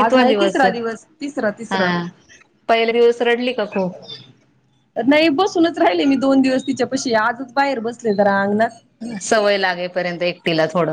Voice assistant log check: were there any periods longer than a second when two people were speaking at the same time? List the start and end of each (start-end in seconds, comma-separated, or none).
none